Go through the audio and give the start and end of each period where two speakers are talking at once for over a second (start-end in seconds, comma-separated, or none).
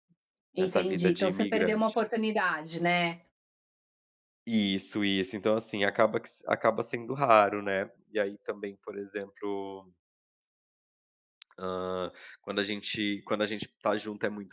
0.6-2.1